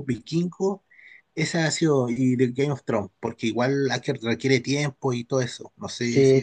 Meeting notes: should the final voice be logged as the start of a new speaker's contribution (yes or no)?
yes